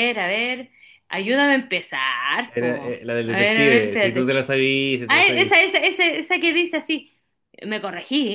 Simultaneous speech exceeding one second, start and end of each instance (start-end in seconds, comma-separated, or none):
2.4-4.3